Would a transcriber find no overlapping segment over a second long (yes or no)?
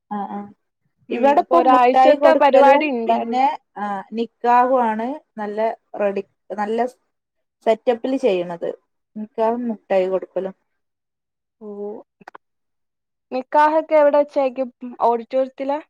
no